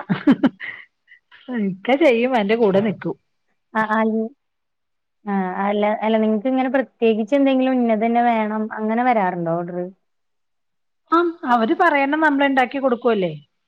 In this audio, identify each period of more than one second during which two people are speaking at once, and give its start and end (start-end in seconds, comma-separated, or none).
none